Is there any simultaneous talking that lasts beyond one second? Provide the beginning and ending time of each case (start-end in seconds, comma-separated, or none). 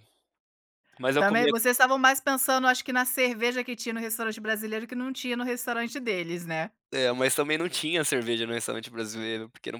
none